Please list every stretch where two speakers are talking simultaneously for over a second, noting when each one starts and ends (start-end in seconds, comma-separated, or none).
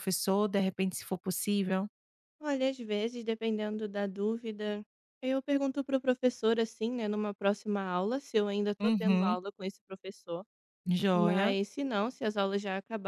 none